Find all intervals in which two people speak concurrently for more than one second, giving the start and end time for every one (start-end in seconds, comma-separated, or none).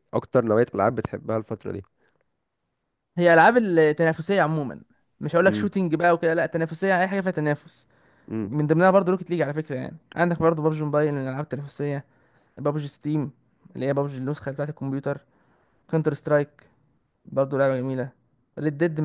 none